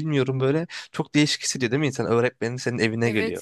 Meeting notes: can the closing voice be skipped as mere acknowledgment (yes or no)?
no